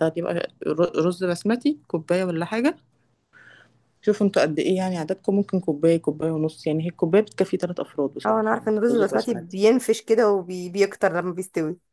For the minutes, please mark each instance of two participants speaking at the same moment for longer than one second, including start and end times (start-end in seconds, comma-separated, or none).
8.3-9.6